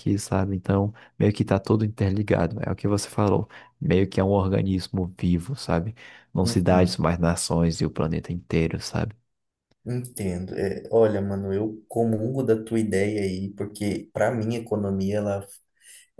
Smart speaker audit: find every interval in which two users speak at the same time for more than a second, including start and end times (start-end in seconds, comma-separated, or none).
none